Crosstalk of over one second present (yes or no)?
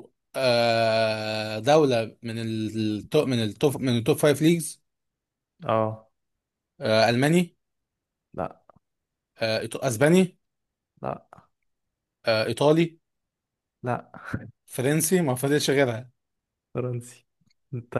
no